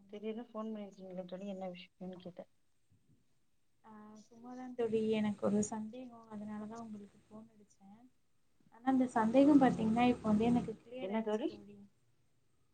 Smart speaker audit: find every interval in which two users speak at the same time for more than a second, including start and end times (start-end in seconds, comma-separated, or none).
none